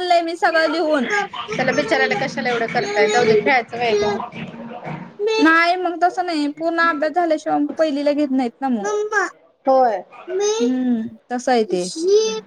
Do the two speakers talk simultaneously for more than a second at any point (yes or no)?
no